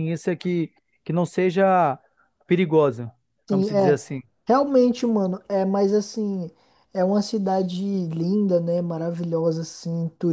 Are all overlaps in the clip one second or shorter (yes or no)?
yes